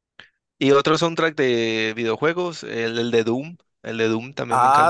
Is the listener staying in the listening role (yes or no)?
no